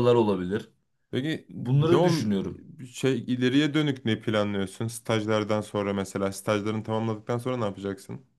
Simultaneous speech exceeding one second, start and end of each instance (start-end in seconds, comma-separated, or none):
none